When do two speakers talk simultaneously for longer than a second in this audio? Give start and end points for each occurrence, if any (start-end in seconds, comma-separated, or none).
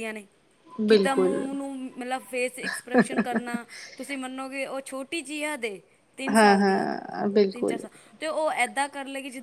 none